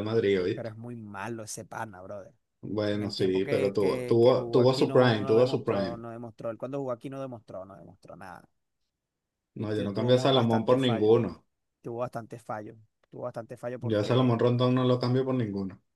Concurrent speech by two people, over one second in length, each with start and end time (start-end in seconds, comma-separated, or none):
2.9-6.0, 9.6-11.1